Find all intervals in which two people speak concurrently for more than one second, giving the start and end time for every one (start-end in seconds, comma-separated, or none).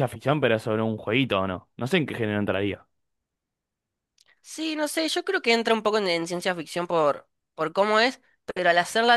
none